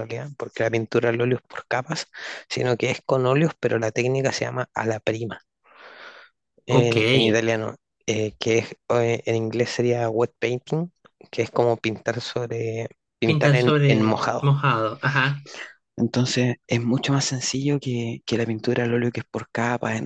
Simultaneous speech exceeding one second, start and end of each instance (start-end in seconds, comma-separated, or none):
13.2-14.5